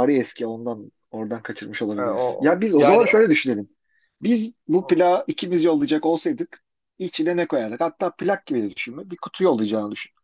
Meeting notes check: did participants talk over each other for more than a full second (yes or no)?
yes